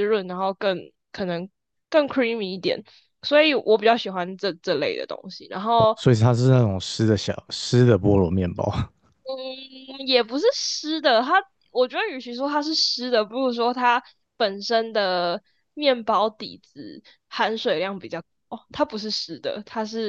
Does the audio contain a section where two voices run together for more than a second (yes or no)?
no